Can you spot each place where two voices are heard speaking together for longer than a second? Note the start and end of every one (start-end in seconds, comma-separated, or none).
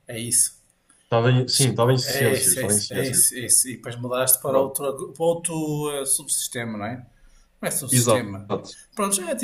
2.0-3.3